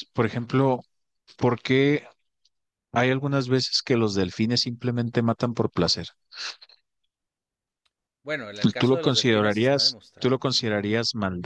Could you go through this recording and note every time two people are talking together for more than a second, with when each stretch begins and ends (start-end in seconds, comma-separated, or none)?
8.8-10.4